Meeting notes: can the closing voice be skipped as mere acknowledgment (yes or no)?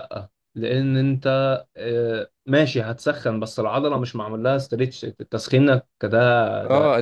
no